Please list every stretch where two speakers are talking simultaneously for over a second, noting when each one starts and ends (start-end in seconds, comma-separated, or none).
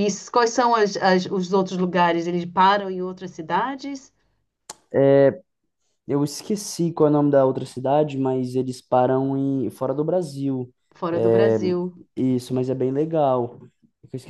none